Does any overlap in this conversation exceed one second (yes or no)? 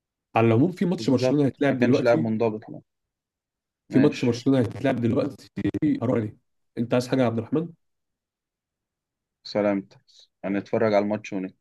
yes